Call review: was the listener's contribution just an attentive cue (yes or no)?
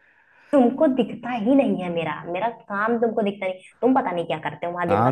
no